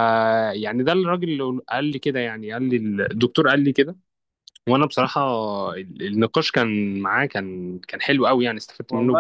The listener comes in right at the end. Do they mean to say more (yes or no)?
yes